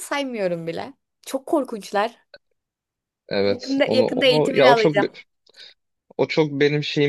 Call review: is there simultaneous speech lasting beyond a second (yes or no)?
yes